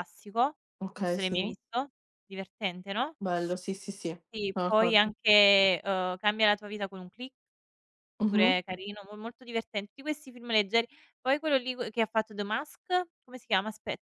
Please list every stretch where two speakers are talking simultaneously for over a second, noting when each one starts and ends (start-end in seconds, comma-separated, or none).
none